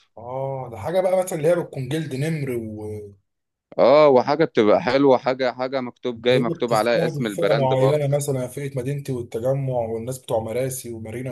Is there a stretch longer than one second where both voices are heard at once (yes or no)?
yes